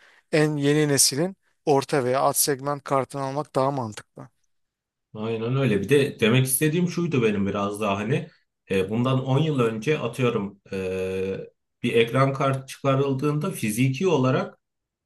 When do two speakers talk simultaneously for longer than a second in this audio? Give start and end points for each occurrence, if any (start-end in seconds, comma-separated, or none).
none